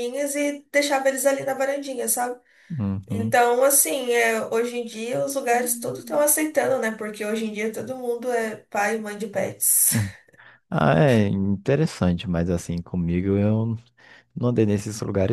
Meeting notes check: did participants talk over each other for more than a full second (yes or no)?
no